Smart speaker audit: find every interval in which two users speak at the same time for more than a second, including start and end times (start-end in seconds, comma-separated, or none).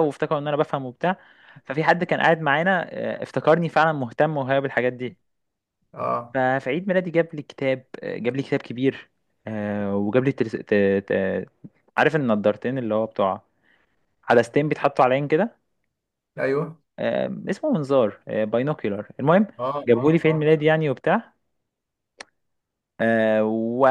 none